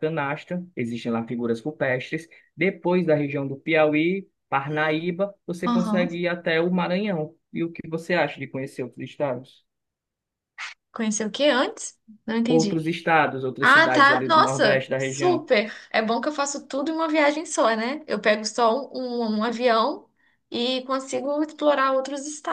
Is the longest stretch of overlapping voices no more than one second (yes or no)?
no